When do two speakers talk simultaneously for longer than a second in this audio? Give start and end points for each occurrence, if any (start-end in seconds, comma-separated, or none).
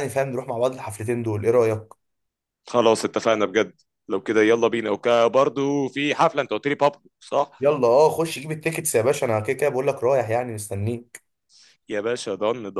none